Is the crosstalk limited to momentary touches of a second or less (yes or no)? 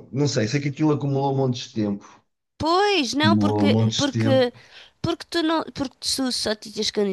no